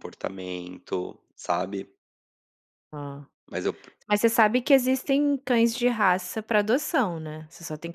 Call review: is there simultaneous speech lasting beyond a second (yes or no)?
no